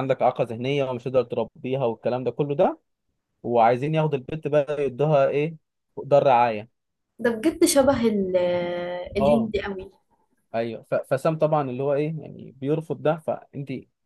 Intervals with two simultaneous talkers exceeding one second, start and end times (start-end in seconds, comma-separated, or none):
none